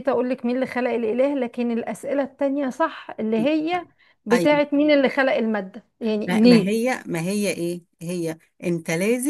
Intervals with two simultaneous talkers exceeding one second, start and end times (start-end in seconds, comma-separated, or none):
none